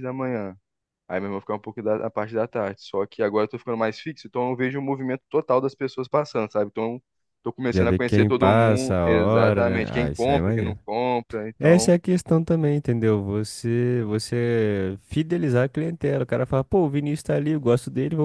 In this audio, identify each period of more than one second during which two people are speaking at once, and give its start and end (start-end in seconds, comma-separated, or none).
7.7-10.8